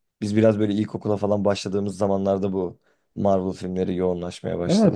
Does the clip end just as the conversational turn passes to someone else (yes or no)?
yes